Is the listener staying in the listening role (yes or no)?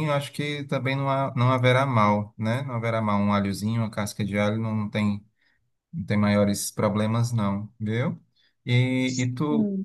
yes